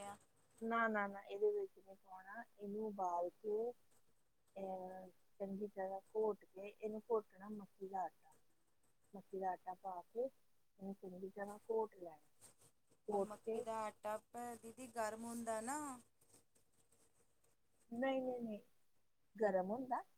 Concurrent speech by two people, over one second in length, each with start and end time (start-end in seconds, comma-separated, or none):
none